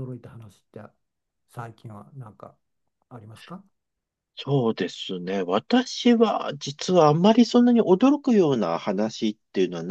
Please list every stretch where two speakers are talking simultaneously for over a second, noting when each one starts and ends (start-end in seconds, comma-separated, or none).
none